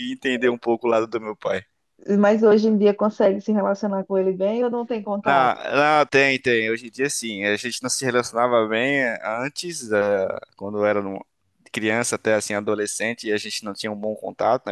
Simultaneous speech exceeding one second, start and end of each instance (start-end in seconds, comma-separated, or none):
none